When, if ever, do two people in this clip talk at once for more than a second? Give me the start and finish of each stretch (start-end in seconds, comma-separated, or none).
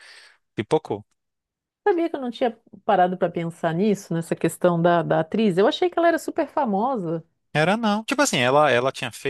none